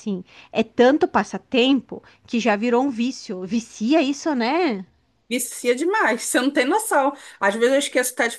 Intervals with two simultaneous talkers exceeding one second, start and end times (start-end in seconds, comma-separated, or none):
none